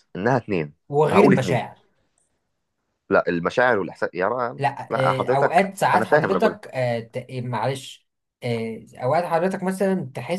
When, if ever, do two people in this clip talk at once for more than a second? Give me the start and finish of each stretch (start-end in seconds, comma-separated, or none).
4.6-6.6